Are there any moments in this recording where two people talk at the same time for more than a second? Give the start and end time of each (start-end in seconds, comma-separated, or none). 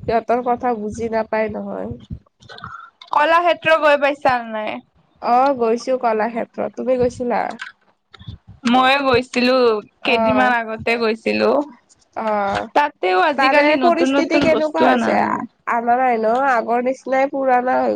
13.4-15.2